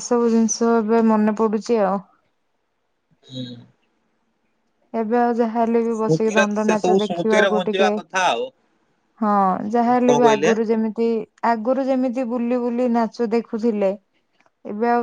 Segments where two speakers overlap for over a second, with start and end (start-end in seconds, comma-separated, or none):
6.0-7.9